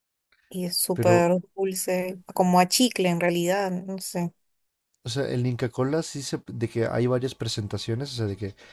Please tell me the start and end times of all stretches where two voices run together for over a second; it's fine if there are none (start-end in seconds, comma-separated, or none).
none